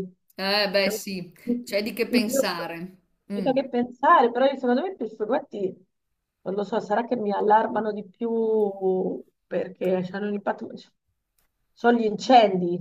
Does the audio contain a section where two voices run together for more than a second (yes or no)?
no